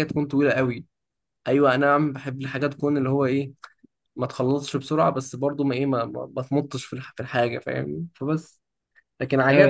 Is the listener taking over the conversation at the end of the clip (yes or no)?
yes